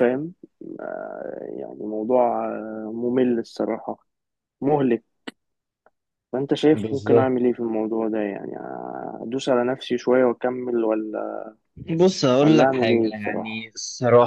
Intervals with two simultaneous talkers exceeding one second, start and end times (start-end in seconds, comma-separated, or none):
12.4-13.7